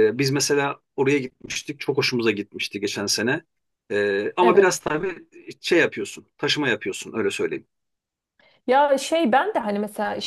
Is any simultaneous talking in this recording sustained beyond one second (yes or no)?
no